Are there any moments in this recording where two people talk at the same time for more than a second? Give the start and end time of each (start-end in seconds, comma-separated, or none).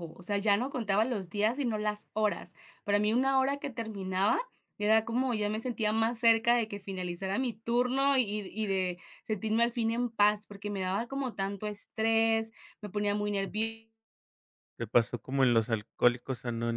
none